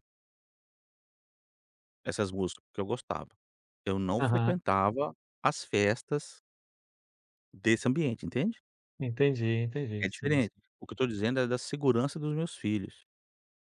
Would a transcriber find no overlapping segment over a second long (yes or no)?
yes